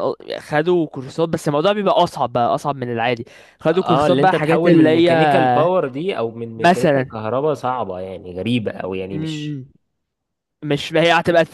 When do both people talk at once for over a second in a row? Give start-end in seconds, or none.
3.7-5.1